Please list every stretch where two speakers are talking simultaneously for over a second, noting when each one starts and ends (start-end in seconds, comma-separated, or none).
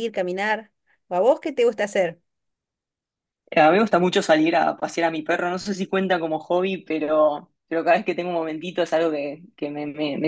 none